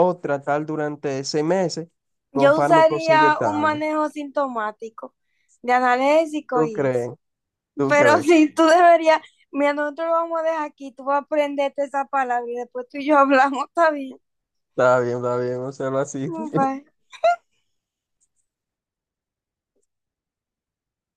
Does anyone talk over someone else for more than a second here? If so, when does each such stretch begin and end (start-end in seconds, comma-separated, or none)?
2.3-3.8